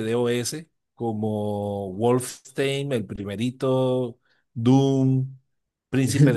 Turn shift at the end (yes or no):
no